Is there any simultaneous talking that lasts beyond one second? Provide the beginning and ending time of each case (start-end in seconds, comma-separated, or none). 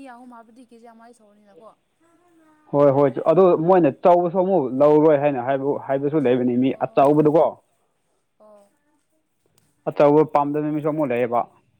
none